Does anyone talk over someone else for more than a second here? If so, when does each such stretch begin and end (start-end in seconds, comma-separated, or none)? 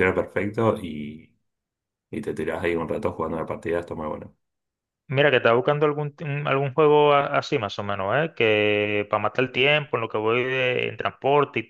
none